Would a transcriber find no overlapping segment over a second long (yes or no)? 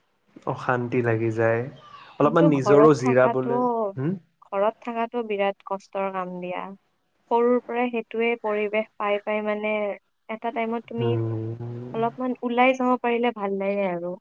no